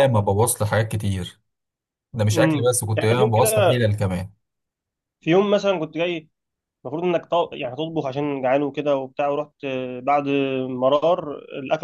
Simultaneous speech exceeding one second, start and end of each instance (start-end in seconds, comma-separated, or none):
2.3-3.8